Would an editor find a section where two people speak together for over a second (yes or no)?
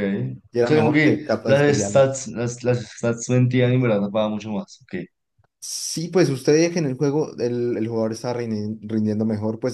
yes